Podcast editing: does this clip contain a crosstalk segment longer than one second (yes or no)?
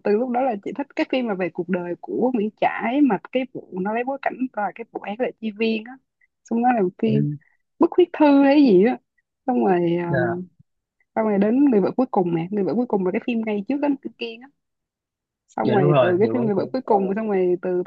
yes